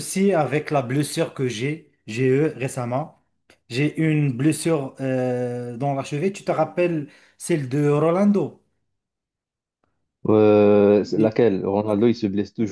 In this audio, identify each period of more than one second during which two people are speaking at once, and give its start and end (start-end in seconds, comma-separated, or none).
none